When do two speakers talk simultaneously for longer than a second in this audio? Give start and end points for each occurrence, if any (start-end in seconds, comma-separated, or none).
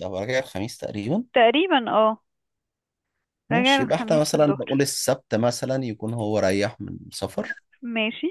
3.5-4.9